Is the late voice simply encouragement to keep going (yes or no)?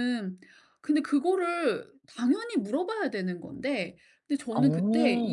yes